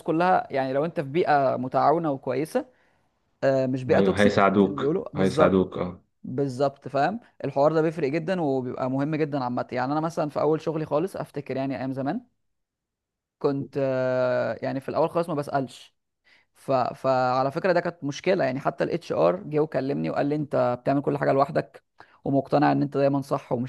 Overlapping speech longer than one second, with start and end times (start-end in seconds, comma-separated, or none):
3.9-5.8